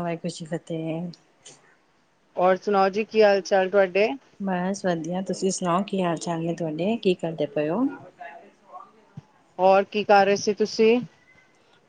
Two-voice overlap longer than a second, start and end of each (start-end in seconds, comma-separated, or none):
none